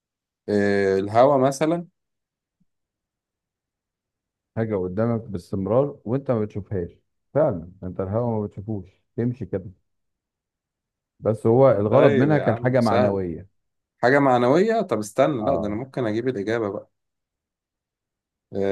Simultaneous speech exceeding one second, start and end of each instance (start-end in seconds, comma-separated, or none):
11.9-13.2